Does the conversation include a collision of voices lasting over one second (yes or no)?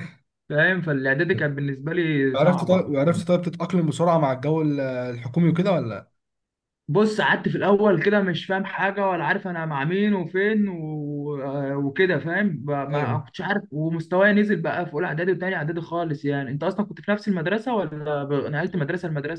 no